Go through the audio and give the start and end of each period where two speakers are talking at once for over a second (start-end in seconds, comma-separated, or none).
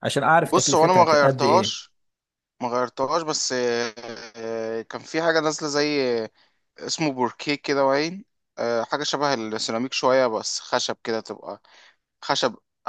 0.5-1.8